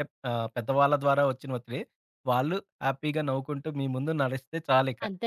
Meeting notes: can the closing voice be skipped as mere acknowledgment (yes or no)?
no